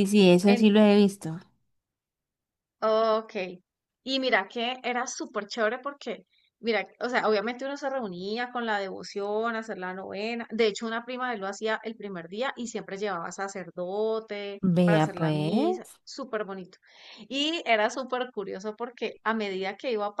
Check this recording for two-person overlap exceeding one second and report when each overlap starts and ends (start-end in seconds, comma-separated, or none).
14.6-16.0